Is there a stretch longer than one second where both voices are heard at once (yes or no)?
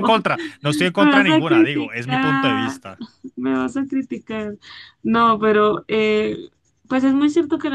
yes